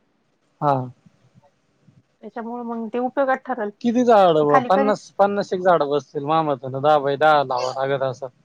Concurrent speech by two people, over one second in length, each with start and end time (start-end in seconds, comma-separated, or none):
none